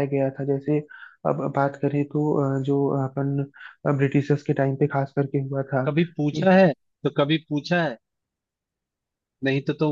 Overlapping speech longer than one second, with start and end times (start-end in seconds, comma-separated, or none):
none